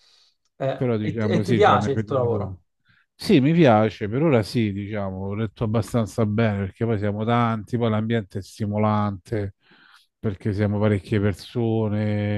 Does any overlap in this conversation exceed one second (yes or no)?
yes